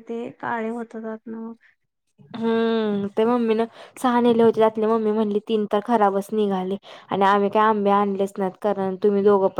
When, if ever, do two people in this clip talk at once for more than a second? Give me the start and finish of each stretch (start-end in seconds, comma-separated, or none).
none